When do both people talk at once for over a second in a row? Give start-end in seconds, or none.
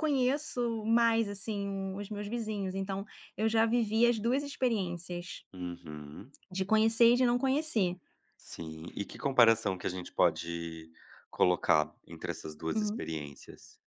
none